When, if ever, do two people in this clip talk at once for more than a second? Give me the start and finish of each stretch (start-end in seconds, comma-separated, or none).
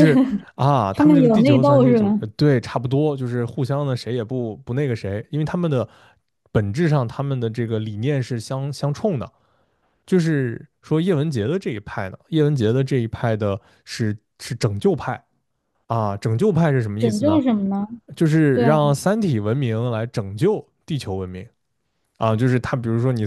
0.9-2.2